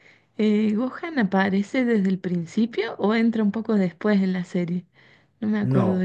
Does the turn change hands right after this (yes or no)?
yes